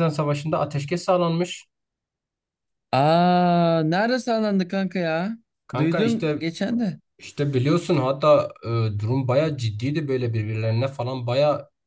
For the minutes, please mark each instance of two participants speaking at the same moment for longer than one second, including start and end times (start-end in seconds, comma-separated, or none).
none